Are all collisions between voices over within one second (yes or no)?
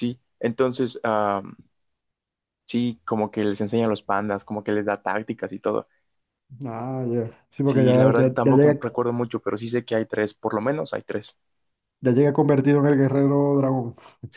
no